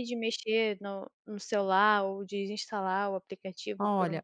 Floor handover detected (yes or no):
yes